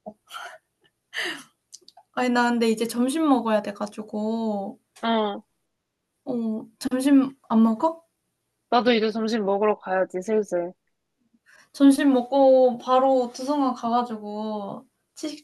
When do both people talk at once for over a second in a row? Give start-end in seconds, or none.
none